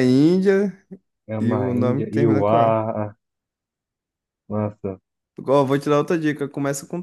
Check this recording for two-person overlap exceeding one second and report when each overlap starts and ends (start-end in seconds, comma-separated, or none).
1.4-2.8